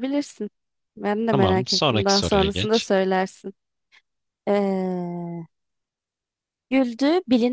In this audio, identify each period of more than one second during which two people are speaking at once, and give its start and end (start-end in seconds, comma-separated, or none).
1.3-2.9